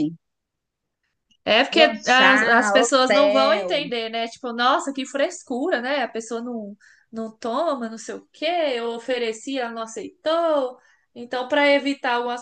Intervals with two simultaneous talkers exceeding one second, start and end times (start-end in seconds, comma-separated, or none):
1.7-3.9